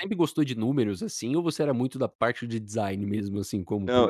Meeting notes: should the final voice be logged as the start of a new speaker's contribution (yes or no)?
yes